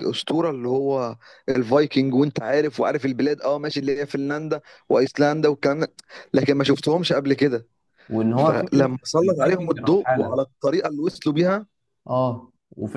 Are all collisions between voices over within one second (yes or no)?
no